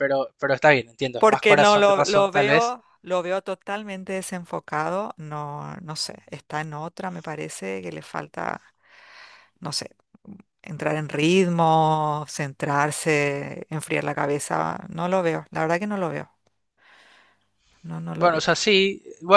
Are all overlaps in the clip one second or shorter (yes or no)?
no